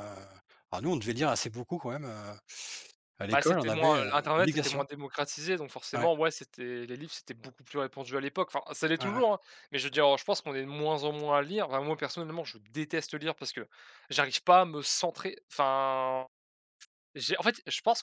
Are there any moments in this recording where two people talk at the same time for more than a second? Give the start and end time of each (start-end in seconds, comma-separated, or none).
3.3-4.8